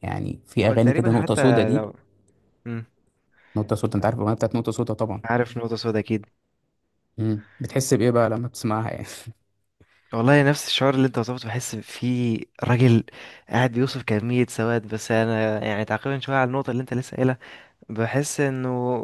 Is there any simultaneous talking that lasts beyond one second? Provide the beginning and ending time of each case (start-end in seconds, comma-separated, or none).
0.6-1.9